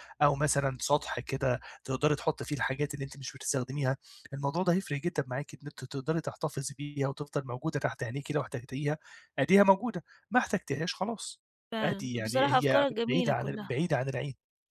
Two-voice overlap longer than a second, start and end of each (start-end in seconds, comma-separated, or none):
11.8-13.7